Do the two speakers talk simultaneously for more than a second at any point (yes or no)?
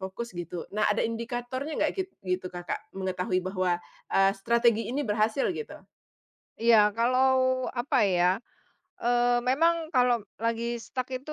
no